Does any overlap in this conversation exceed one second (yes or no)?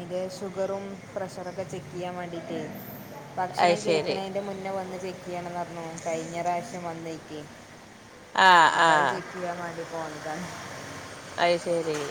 no